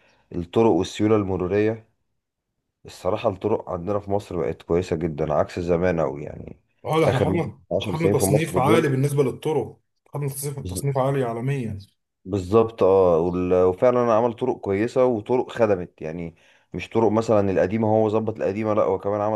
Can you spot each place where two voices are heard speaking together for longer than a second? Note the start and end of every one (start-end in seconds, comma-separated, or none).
7.0-8.9